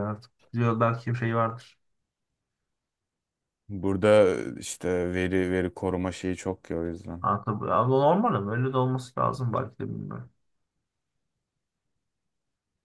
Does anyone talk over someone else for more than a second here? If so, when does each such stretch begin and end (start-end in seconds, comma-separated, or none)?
none